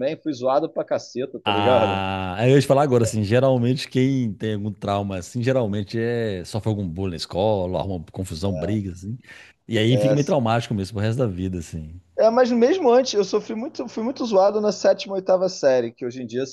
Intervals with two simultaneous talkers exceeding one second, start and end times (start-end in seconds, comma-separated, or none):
none